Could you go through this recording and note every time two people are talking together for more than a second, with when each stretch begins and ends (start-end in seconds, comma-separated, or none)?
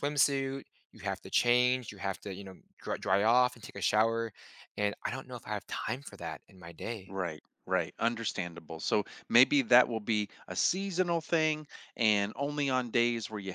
none